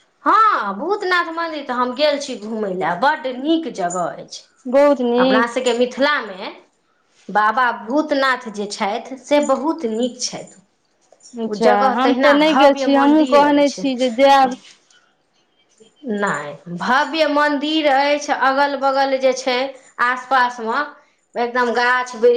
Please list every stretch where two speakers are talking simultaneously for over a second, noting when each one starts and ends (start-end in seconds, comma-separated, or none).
11.5-13.8